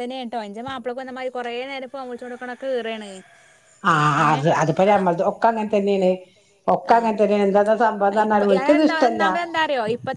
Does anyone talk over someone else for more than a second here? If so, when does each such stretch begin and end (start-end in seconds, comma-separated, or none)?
6.9-9.2